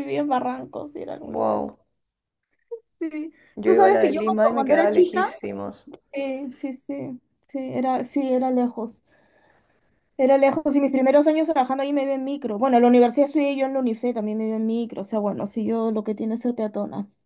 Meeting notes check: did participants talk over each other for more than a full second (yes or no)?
yes